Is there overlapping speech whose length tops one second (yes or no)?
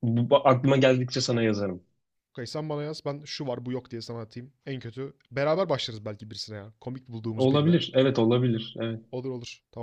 no